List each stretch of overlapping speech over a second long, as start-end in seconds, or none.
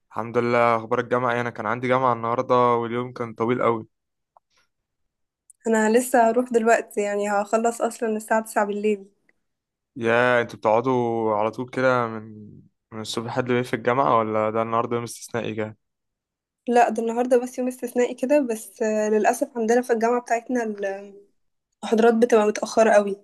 none